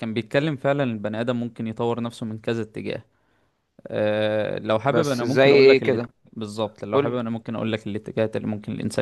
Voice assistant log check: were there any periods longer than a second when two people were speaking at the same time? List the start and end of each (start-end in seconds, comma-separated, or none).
4.8-6.1